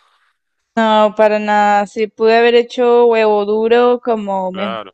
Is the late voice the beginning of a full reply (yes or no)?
no